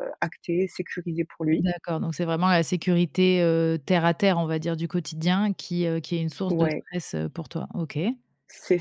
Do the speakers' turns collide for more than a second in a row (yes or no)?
no